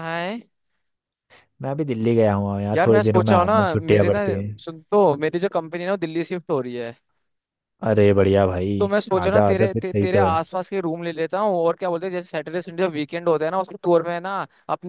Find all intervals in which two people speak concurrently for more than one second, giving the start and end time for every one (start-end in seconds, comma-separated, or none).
2.7-4.2, 8.8-10.4